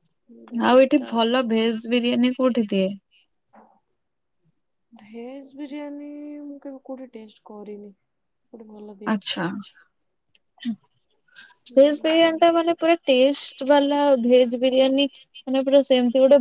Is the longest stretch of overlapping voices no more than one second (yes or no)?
yes